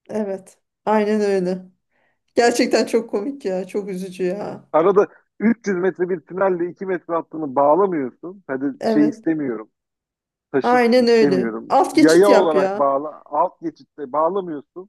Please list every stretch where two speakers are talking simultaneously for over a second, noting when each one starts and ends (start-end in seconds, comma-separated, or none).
10.6-13.0